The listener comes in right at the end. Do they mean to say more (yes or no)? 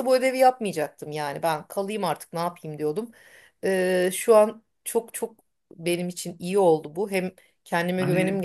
yes